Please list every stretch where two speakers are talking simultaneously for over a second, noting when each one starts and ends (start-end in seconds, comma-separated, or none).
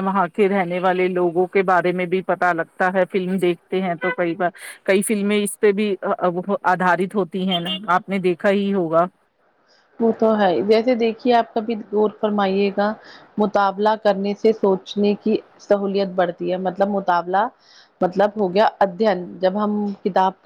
none